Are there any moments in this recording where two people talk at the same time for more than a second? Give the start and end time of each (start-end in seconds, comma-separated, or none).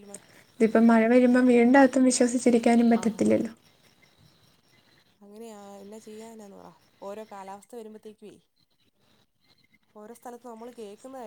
none